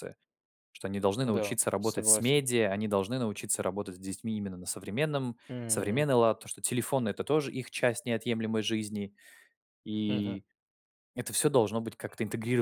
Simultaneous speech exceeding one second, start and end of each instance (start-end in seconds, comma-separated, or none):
1.2-2.4